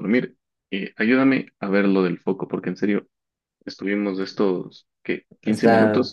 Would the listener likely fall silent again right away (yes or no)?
yes